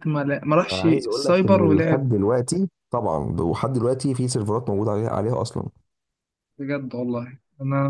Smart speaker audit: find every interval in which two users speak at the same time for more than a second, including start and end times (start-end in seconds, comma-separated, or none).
0.7-2.1